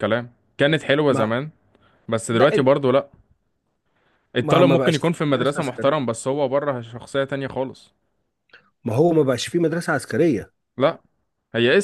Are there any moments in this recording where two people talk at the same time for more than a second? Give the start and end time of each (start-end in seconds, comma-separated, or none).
4.4-6.1